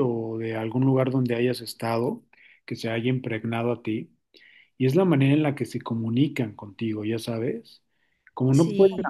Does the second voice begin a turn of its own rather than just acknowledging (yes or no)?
no